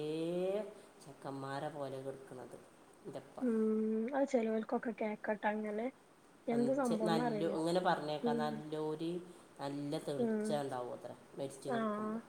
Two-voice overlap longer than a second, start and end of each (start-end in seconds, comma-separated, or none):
none